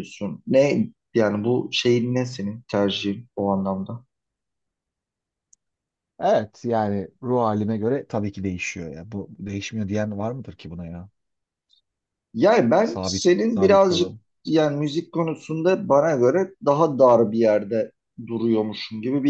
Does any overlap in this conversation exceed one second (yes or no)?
yes